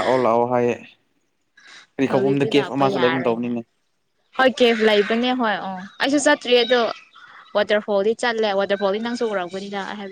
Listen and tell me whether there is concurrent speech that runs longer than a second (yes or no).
yes